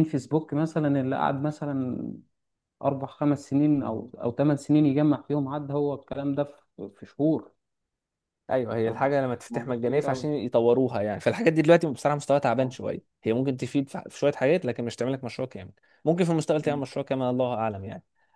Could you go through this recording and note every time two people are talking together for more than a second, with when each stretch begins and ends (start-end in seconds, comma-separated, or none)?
8.9-10.3